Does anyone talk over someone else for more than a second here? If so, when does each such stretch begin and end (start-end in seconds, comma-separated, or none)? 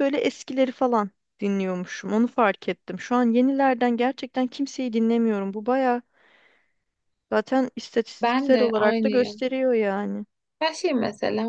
8.2-9.4